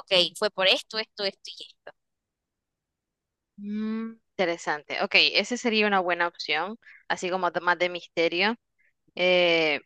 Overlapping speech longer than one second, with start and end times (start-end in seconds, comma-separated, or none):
none